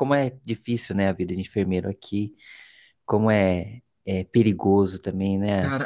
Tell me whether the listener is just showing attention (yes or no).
no